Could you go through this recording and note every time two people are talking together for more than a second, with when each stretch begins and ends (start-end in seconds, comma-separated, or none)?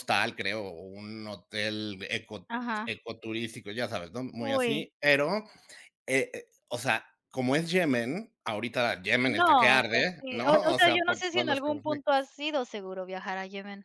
9.2-12.3